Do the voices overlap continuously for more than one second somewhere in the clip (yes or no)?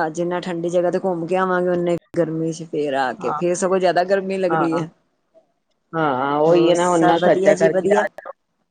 yes